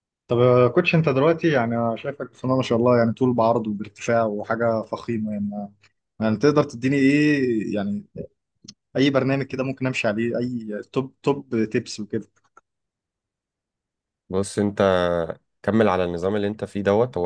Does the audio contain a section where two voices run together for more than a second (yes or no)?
no